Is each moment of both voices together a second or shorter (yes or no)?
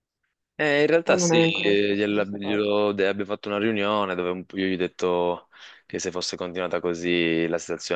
no